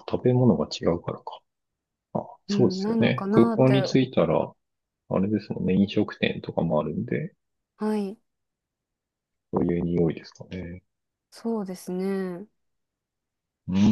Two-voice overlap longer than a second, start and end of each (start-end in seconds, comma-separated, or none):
2.5-3.9